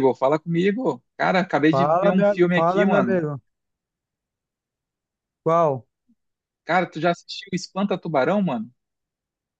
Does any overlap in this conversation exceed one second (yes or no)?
yes